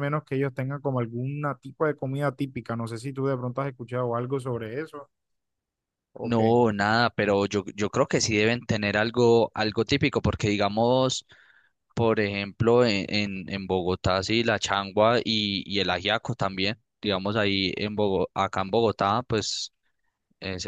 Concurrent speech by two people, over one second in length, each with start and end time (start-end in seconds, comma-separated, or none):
none